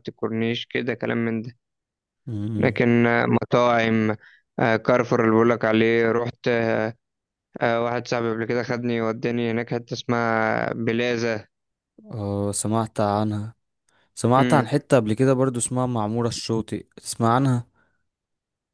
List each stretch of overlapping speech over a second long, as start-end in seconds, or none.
none